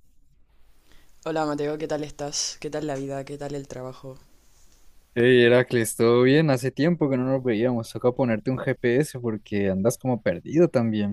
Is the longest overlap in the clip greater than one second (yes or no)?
no